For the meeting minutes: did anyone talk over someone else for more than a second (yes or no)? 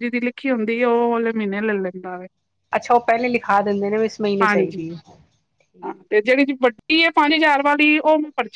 no